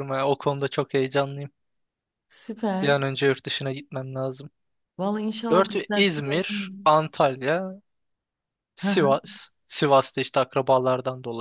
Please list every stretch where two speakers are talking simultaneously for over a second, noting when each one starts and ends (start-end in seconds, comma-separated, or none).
5.5-6.9